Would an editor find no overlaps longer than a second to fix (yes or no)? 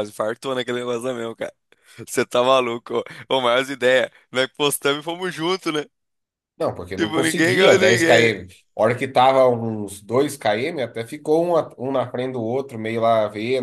no